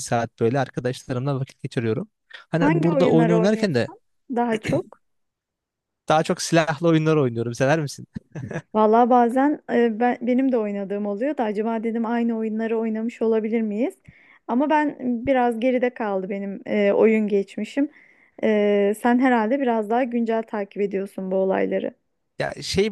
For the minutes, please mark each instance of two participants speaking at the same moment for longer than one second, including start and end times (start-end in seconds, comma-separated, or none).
2.6-3.9